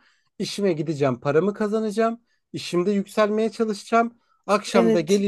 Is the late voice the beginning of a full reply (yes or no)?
no